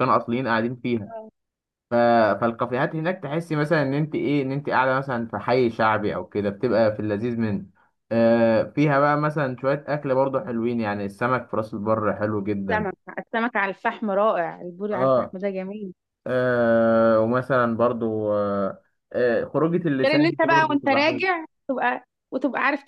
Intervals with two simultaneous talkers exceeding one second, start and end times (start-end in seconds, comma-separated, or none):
20.0-21.2